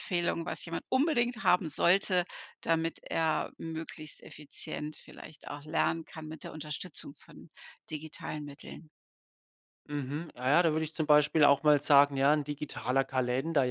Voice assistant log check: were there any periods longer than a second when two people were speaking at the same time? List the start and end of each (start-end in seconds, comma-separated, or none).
none